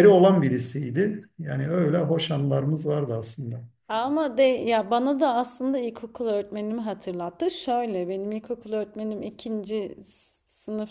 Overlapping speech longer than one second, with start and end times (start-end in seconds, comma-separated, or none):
none